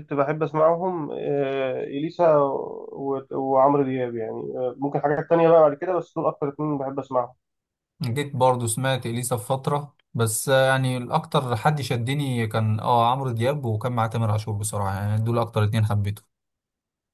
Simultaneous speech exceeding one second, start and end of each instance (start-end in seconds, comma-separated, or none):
none